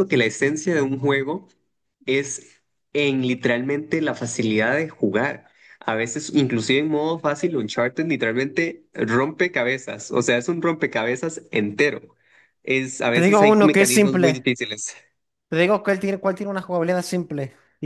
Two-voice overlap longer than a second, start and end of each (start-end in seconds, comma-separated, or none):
13.1-14.5